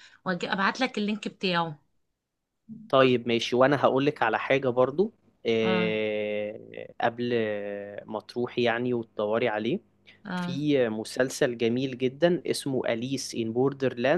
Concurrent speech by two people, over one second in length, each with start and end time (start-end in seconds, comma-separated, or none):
none